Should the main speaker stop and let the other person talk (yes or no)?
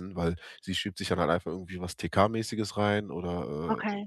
no